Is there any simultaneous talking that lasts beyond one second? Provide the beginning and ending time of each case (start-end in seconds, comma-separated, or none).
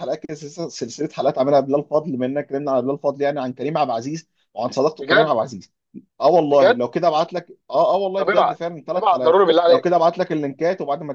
8.2-10.0